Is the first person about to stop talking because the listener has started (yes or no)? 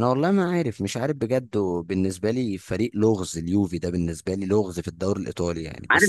yes